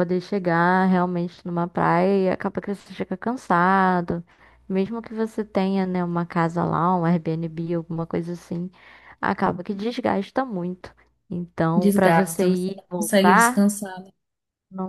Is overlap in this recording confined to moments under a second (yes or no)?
no